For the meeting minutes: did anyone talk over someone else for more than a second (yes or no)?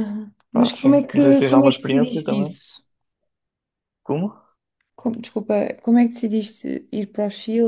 yes